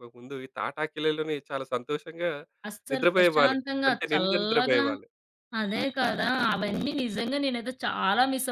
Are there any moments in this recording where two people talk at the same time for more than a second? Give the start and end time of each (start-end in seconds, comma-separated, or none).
2.9-4.8